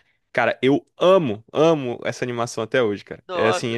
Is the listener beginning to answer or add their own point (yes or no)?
no